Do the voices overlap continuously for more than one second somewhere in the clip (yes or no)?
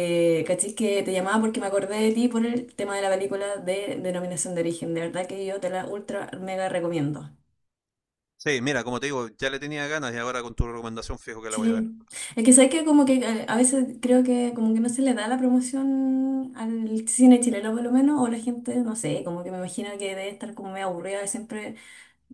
no